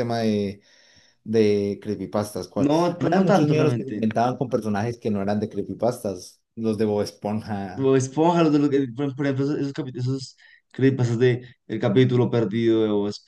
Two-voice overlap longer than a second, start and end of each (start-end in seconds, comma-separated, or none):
2.5-4.0